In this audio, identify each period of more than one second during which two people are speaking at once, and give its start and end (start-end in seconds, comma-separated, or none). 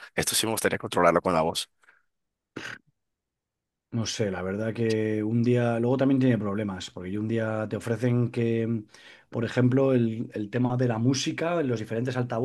none